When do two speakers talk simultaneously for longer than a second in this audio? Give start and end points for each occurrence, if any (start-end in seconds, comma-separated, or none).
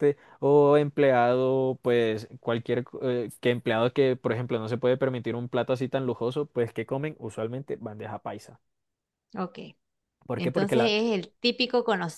none